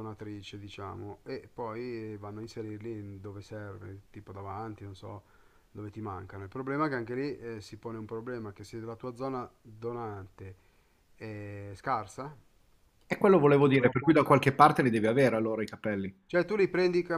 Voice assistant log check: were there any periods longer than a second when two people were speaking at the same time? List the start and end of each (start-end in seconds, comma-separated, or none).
none